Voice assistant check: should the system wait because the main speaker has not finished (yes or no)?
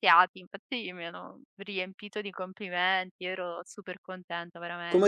no